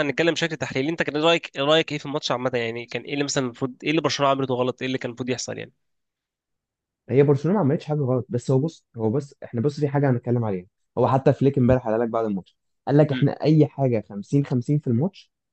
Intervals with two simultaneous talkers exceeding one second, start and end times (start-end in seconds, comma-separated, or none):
none